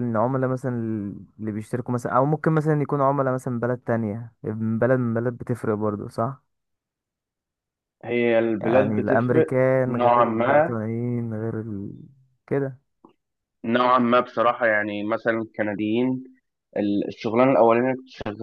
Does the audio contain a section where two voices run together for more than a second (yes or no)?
yes